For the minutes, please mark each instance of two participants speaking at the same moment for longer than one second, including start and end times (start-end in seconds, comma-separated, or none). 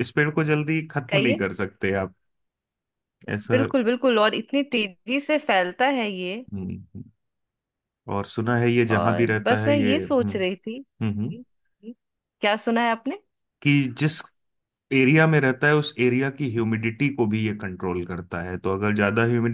8.9-10.3